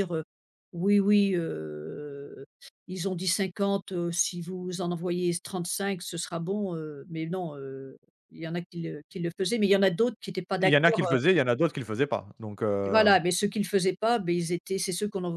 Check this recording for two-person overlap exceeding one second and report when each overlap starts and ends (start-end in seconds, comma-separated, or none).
none